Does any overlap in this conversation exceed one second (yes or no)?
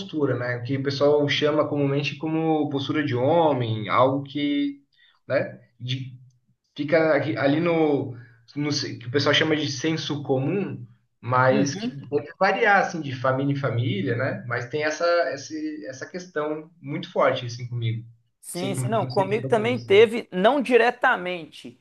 yes